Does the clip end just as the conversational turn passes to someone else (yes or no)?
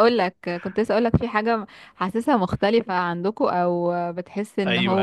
yes